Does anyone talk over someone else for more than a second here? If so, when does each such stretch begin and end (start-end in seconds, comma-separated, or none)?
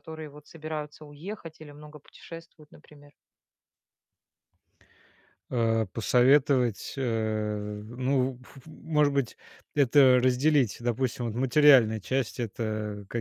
none